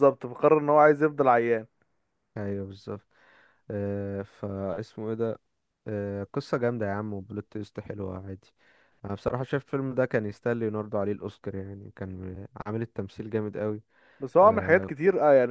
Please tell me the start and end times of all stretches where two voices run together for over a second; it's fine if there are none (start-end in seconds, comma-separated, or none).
none